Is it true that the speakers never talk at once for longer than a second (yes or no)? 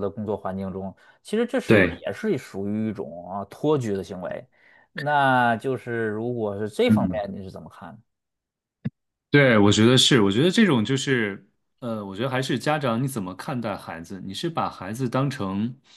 yes